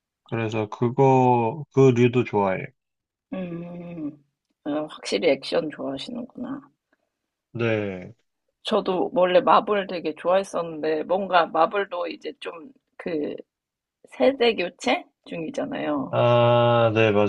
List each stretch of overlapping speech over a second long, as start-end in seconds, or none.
none